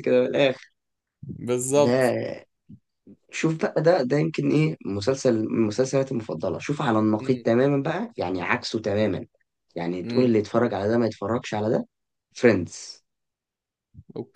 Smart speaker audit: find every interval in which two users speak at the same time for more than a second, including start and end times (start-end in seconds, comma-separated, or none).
none